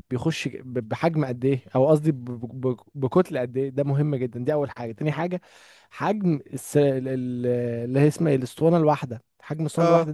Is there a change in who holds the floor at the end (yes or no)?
no